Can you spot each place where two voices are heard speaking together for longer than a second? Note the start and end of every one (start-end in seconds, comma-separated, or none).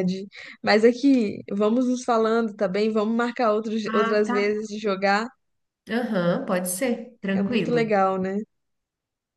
none